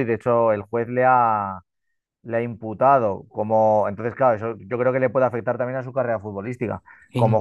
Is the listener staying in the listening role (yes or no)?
yes